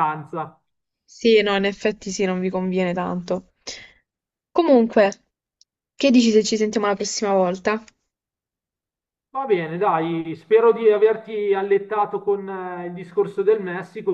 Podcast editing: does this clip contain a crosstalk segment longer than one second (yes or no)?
no